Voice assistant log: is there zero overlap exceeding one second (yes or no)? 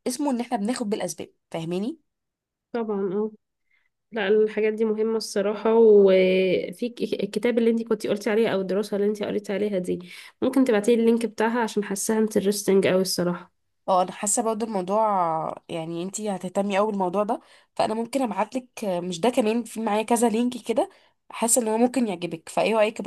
yes